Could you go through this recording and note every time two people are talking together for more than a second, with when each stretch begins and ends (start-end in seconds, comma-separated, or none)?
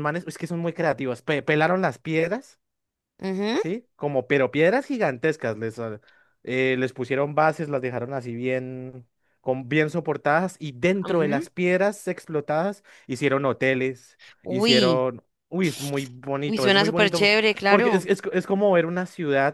16.4-18.1